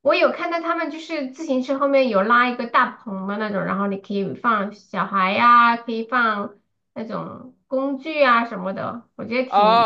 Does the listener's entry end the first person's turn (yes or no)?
yes